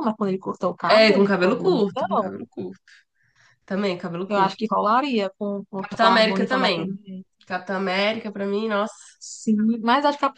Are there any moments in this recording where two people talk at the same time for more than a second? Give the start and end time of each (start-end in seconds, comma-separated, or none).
0.9-2.4, 5.8-7.0